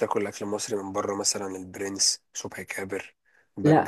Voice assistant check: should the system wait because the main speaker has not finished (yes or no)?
no